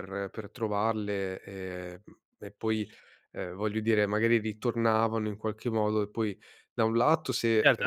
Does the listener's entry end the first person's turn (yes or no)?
yes